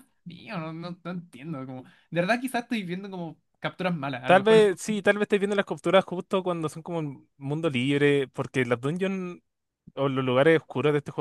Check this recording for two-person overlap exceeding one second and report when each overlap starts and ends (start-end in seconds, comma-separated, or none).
none